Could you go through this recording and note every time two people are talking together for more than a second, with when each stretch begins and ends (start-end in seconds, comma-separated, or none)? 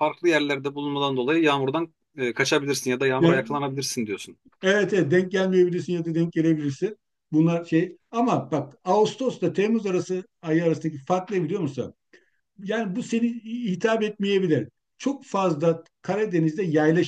none